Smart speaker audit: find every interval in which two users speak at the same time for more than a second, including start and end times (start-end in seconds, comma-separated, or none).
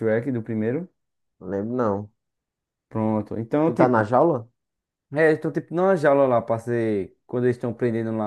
none